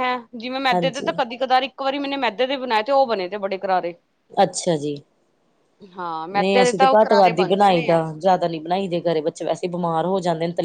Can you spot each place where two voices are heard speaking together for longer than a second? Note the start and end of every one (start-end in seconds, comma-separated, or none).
6.4-8.0